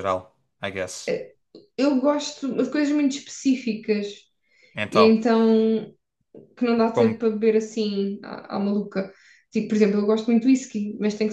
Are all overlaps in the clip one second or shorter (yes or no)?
yes